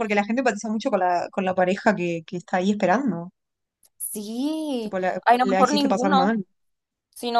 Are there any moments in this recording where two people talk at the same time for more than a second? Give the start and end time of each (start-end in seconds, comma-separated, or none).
4.8-6.4